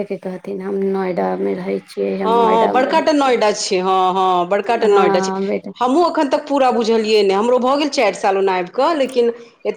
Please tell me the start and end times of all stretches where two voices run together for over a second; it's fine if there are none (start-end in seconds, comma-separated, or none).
none